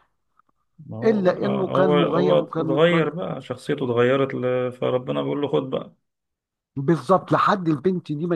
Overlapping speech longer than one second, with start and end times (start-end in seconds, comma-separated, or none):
1.0-3.1